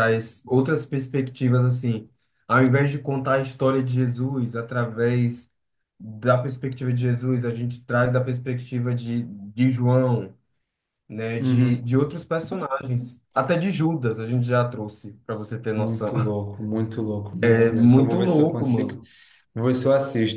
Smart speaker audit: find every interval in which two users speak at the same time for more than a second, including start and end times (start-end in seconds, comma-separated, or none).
17.4-19.0